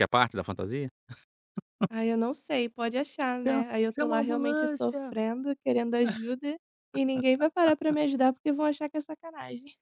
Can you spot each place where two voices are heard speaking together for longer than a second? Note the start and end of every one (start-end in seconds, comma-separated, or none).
3.5-5.1